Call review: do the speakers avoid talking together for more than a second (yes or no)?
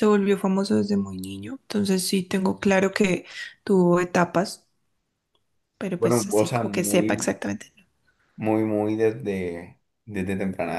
no